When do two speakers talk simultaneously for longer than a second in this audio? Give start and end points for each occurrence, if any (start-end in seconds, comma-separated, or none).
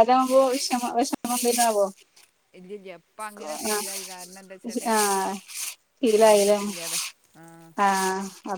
3.5-4.9